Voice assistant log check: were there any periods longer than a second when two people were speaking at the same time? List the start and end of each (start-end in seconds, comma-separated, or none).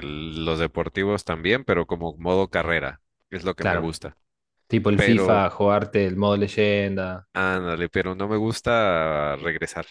none